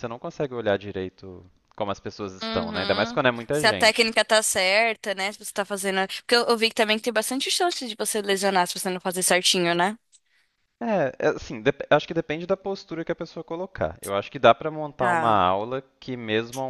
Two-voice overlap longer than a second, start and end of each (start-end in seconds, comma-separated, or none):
2.4-4.1